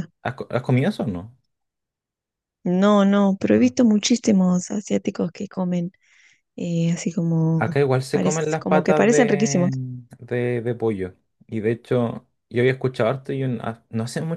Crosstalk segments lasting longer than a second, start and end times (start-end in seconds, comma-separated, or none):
7.6-9.7